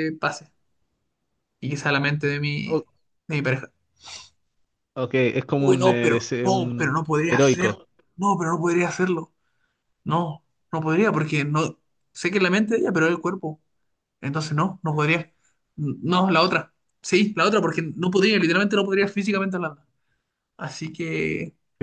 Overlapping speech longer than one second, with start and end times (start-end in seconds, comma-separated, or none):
5.6-7.8